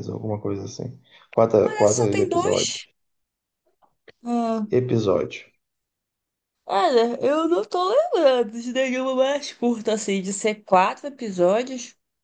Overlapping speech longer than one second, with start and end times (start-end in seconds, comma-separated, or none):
1.6-2.8